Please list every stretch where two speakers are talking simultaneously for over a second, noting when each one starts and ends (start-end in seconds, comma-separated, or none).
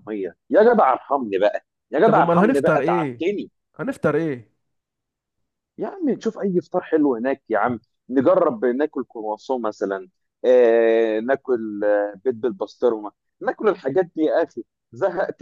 2.0-3.3